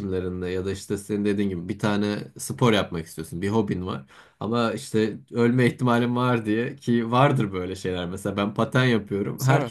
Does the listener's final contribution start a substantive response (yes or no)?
no